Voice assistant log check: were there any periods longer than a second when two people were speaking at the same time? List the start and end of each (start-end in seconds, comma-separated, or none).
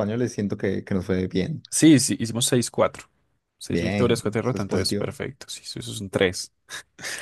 3.7-5.1